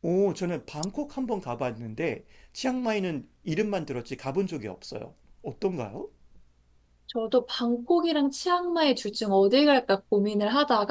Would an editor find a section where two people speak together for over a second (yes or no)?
no